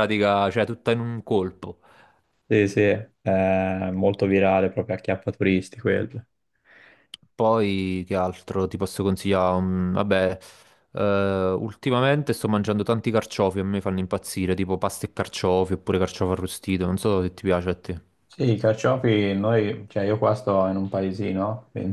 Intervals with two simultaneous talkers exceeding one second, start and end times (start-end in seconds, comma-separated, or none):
none